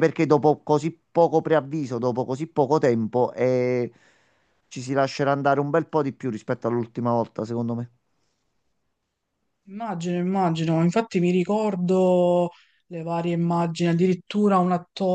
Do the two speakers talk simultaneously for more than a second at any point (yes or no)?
no